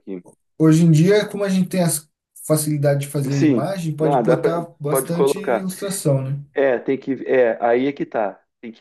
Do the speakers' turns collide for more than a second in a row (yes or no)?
yes